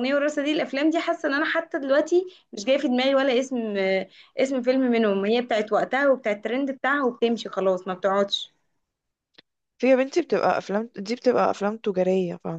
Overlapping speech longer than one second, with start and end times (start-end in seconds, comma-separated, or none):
none